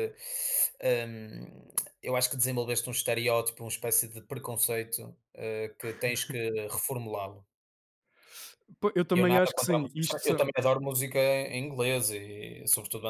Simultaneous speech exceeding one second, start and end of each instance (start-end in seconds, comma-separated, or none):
9.1-10.5